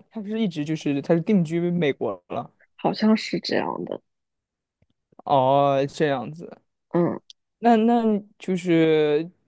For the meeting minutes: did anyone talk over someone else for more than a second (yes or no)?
no